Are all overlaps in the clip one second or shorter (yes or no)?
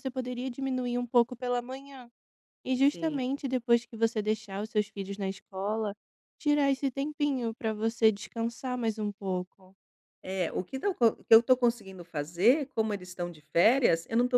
yes